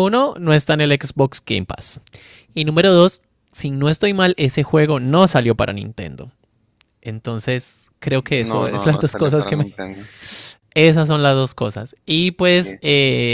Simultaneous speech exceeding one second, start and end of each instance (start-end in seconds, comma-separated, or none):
8.3-9.7